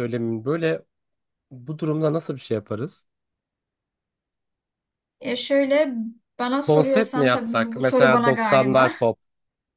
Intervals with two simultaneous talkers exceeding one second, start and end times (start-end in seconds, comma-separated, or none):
6.6-8.9